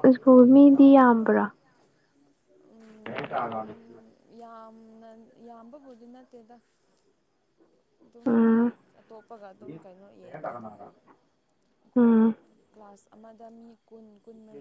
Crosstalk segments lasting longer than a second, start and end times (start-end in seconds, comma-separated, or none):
none